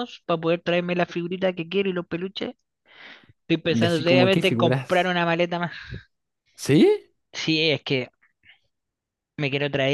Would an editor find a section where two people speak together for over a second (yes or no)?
yes